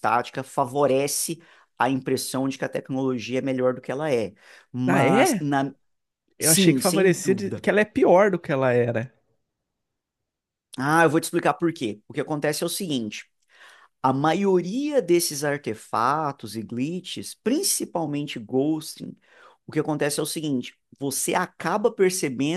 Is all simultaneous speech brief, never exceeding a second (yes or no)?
no